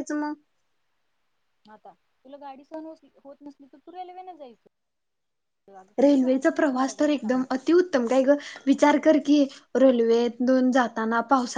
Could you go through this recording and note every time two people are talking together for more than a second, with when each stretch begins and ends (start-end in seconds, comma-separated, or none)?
6.0-7.4